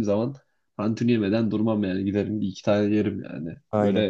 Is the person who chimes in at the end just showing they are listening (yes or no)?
no